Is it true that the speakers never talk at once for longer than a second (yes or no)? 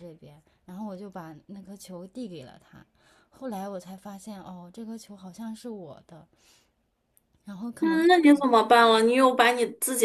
yes